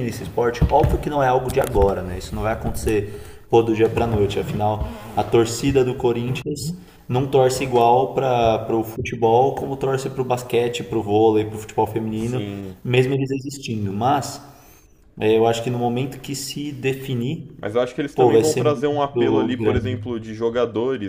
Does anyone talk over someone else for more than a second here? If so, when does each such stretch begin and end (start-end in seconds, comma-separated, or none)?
18.1-20.0